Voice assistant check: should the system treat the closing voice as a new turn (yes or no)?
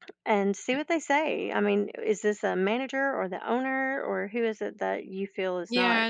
yes